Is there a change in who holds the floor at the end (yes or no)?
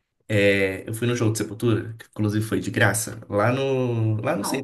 no